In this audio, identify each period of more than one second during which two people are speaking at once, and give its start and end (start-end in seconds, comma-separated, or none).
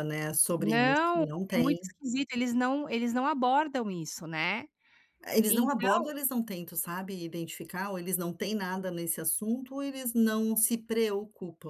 0.6-1.8